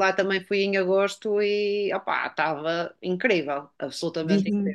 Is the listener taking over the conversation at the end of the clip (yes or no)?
yes